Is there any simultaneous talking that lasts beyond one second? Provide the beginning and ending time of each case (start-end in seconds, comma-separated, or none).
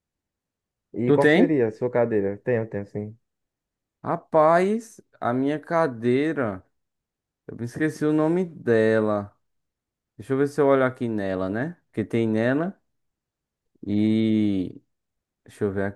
none